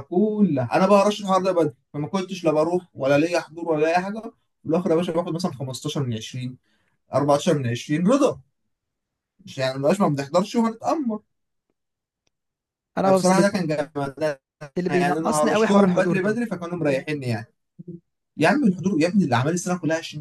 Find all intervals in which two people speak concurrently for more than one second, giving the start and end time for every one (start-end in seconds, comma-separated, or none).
14.9-16.4